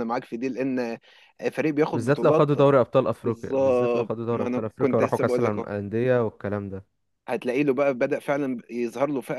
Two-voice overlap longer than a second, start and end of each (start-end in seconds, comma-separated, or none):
3.2-5.6